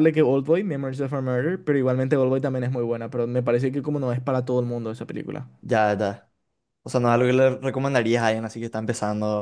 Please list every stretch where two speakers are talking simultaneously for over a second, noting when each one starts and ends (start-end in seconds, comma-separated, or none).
none